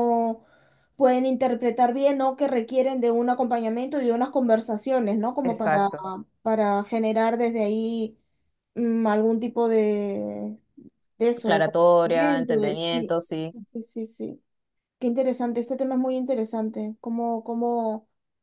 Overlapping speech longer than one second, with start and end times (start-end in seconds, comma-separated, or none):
11.4-13.1